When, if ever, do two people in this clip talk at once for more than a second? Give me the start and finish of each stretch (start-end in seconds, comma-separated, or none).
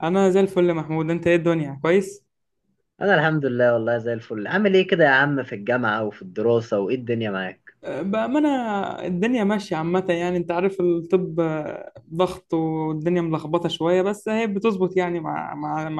none